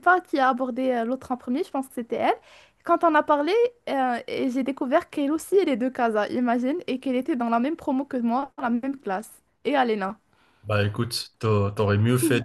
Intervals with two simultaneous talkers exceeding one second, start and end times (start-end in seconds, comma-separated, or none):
none